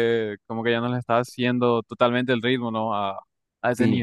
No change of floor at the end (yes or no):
no